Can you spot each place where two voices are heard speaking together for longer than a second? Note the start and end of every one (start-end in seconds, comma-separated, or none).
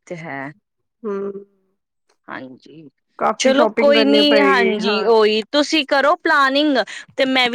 3.4-5.1